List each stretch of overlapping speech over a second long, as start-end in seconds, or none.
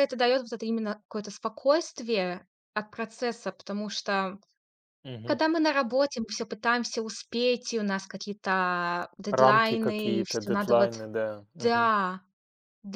9.3-10.9